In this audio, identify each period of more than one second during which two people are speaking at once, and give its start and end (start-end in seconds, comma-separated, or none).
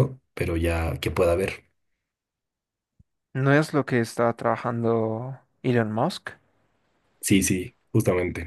none